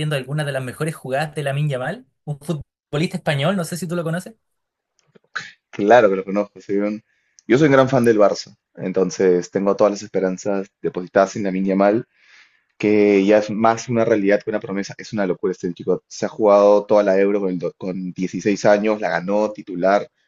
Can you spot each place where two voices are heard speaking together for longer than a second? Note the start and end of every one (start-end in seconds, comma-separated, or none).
none